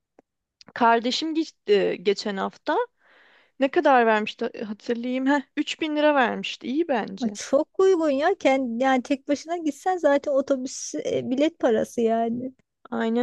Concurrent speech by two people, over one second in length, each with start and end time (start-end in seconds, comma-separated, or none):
none